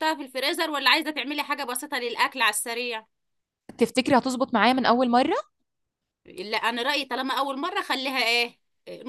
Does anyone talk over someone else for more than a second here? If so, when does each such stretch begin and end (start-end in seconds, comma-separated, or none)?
none